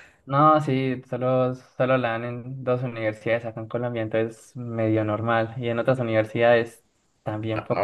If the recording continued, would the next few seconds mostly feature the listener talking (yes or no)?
yes